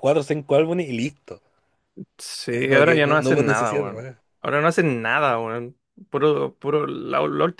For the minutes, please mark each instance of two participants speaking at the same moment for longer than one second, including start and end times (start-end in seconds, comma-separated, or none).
2.5-4.2